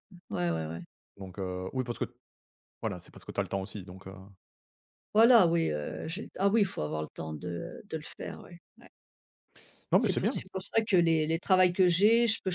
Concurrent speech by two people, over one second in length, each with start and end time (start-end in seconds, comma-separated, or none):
none